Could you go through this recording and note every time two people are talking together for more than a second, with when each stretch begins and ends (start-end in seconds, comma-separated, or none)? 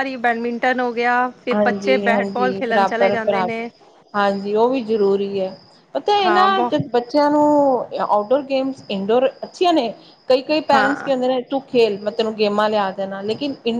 1.5-3.7